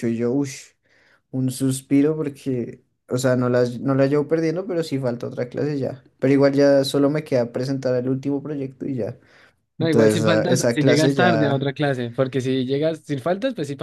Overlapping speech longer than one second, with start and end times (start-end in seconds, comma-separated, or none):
9.8-11.7